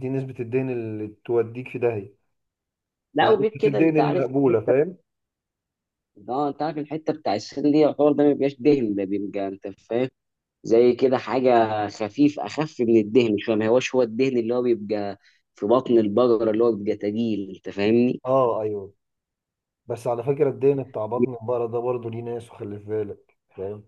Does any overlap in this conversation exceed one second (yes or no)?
yes